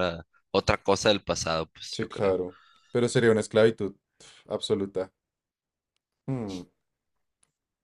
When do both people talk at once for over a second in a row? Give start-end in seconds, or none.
none